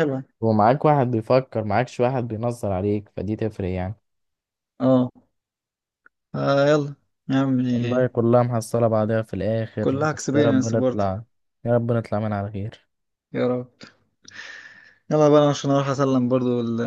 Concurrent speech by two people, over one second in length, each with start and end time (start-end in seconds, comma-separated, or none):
9.8-11.1